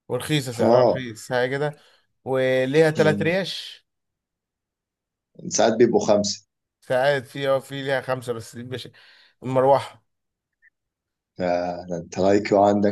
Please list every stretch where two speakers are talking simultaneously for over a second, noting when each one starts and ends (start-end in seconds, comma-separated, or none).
none